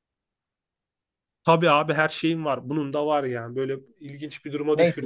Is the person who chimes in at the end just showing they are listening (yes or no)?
no